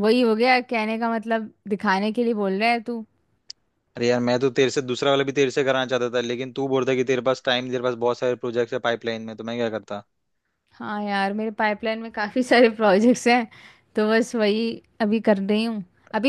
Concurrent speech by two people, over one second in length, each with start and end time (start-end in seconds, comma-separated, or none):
none